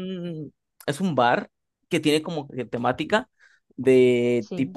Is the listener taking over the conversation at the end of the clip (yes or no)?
no